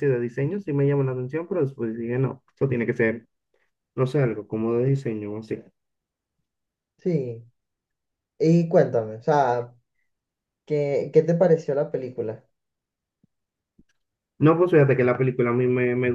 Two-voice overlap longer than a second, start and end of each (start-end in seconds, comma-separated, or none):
none